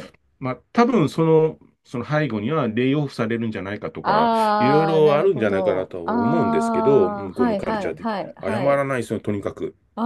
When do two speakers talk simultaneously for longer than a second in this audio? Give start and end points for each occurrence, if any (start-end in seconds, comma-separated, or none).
4.0-8.9